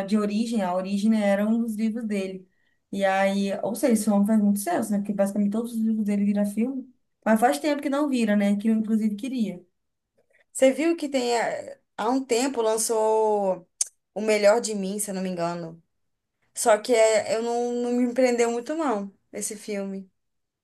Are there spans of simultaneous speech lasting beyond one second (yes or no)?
no